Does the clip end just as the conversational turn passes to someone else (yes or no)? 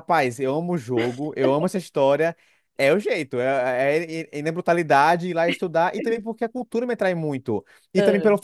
no